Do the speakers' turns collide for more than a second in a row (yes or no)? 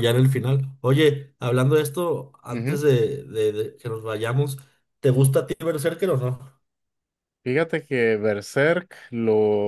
no